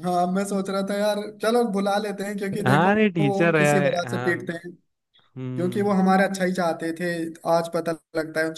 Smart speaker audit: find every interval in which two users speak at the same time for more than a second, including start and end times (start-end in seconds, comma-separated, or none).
2.6-4.6